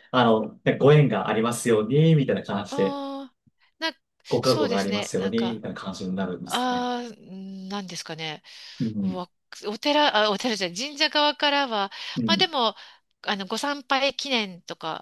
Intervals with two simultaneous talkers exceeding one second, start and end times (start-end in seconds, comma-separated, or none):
4.4-5.6